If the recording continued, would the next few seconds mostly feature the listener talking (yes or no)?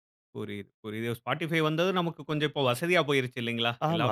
yes